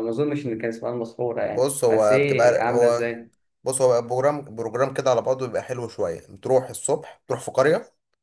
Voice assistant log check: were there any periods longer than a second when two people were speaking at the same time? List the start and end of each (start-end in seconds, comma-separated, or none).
1.4-3.1